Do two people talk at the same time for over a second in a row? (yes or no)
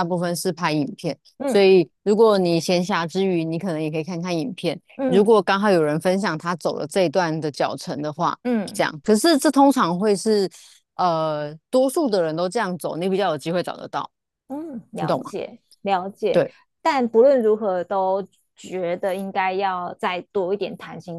no